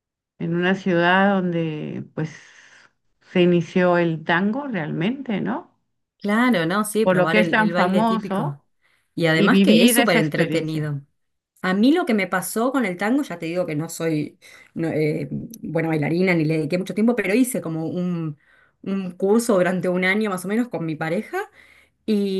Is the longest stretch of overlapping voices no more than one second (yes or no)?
no